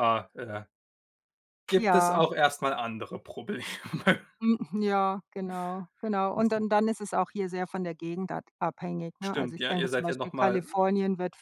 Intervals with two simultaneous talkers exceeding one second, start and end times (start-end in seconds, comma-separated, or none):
9.2-10.7